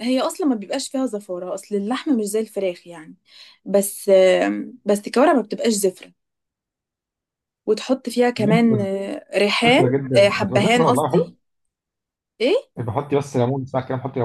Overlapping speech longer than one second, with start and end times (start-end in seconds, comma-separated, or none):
9.7-11.2